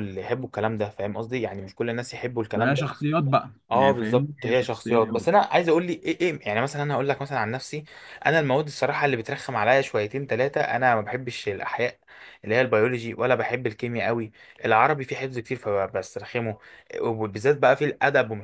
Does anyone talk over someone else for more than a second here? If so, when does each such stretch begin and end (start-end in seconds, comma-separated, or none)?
3.7-5.3